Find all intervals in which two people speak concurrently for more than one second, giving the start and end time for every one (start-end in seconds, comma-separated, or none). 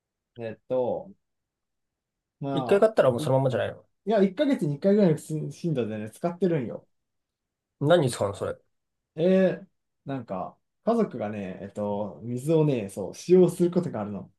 none